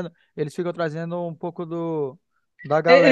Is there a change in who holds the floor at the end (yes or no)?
yes